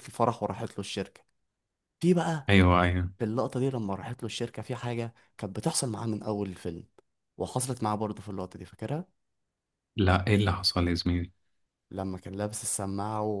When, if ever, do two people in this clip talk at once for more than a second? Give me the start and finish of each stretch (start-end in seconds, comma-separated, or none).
none